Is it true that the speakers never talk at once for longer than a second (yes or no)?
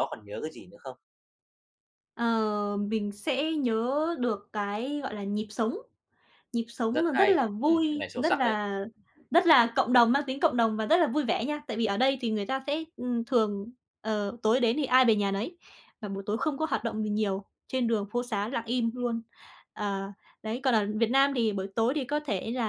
no